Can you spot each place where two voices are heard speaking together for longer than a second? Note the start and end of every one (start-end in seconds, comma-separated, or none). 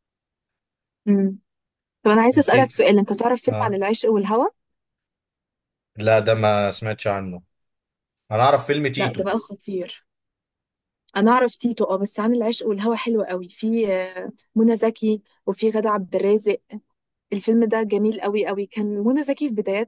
none